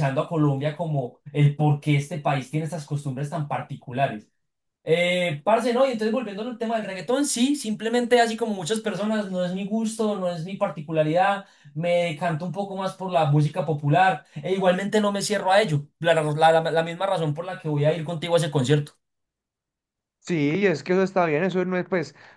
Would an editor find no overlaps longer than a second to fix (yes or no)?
yes